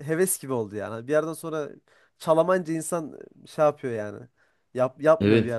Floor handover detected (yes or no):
no